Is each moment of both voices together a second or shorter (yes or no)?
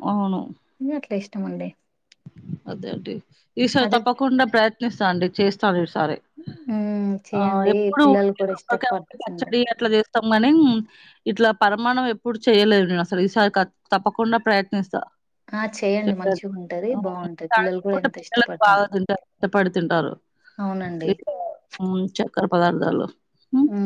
no